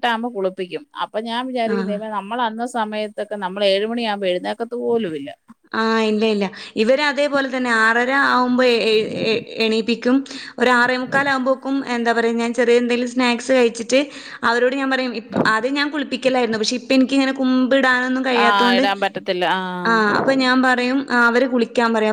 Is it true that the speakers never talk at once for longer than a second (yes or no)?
yes